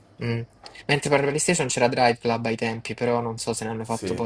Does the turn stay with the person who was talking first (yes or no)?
yes